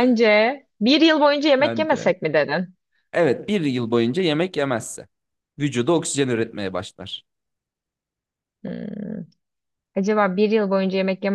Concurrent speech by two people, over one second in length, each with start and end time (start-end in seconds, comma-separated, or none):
none